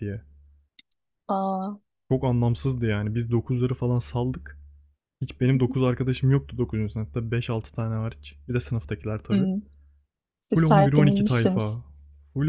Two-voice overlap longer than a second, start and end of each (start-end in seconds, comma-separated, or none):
10.5-11.8